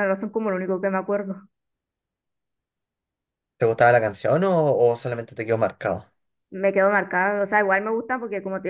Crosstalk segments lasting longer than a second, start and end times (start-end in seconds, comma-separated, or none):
none